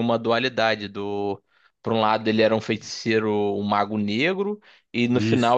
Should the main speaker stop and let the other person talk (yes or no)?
no